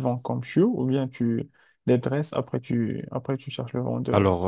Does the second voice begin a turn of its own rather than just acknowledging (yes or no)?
yes